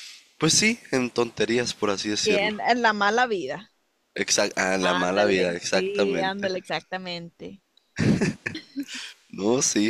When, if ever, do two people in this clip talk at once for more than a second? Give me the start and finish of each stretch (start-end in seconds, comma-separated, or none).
4.8-6.5